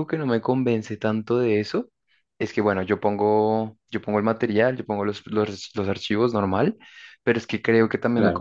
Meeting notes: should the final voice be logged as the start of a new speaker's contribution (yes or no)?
no